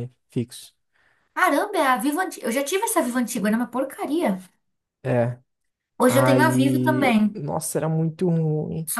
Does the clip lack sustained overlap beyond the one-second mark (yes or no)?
no